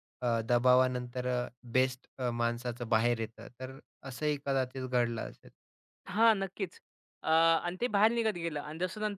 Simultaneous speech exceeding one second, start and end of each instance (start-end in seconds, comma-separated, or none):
none